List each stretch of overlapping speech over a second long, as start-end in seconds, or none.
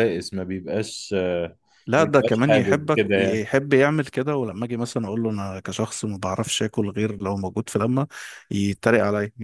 2.0-3.5